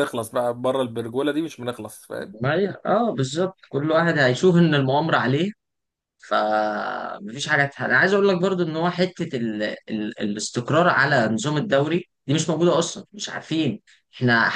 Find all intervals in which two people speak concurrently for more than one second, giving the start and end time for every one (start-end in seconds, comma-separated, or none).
none